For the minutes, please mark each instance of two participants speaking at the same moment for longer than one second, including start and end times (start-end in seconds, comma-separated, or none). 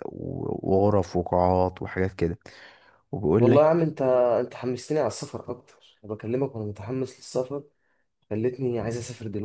none